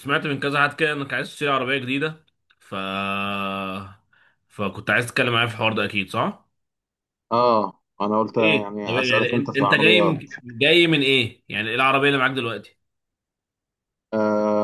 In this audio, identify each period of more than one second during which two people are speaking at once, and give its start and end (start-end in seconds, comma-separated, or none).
8.2-10.2